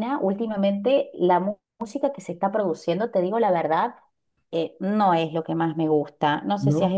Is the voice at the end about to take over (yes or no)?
no